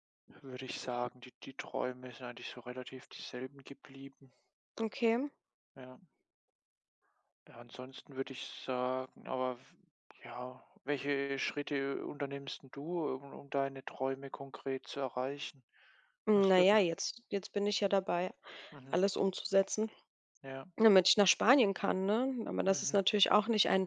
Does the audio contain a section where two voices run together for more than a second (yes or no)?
no